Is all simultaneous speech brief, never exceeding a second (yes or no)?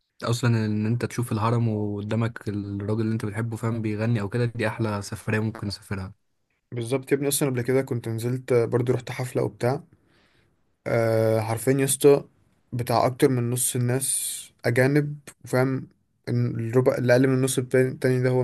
yes